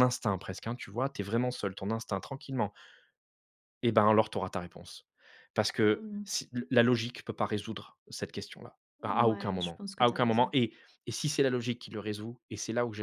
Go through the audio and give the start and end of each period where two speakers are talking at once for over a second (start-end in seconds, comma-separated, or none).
9.1-10.5